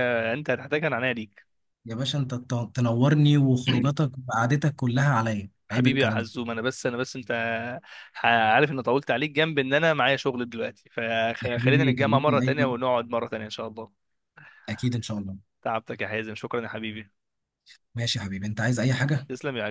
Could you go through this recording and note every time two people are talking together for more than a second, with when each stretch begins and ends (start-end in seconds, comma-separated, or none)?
11.4-12.7